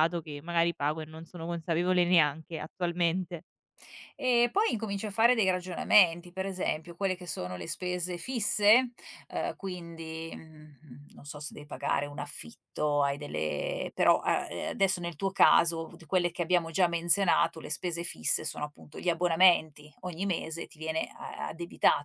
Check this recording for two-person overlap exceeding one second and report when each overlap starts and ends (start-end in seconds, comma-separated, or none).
none